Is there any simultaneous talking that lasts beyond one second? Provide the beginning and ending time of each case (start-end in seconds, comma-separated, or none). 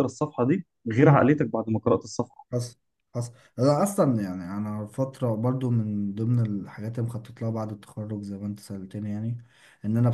none